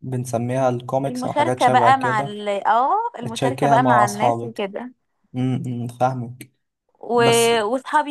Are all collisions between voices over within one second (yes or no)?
no